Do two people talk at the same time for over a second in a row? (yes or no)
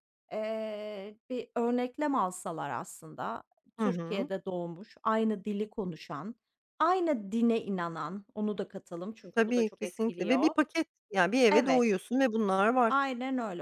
yes